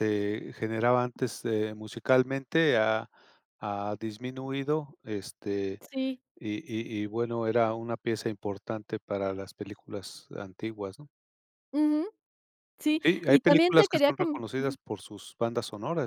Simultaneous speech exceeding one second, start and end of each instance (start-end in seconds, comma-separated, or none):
13.0-14.4